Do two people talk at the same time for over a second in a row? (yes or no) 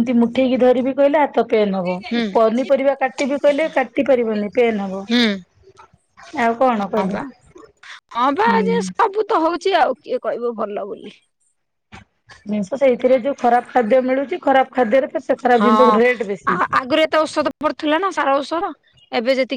no